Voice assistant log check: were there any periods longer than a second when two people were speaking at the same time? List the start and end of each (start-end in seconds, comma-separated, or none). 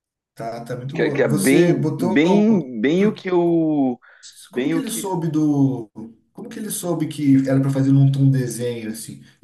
0.9-2.2